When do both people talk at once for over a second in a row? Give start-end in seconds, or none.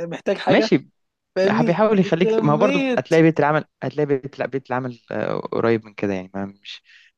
1.7-3.0